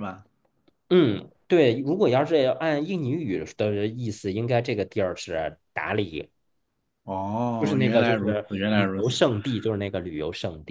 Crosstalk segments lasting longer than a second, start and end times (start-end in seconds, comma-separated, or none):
7.6-9.1